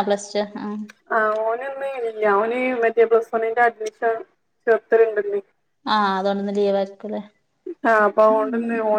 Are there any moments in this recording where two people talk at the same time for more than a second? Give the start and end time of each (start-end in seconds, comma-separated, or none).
none